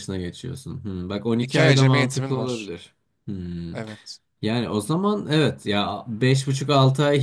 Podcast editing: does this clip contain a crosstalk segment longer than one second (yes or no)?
yes